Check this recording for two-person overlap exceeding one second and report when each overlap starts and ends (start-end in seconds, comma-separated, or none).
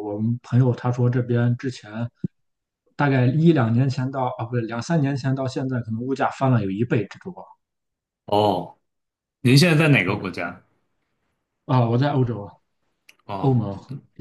none